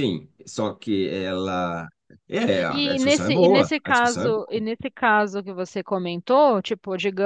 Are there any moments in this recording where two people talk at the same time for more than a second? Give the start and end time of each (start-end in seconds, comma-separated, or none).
2.7-4.6